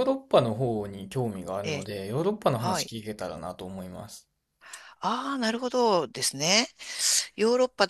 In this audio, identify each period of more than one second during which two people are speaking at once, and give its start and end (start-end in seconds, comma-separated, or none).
none